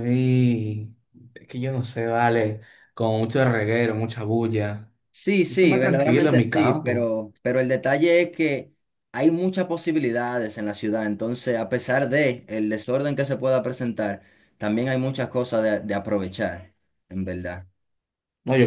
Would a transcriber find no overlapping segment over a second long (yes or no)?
no